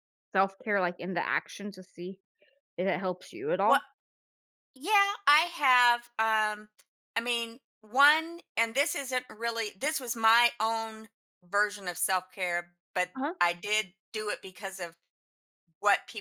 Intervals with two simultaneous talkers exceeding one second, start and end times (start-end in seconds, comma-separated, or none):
none